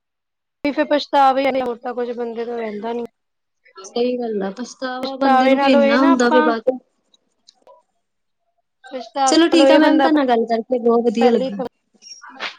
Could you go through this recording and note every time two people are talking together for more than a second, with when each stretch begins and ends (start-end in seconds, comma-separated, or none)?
5.0-6.5, 9.5-11.5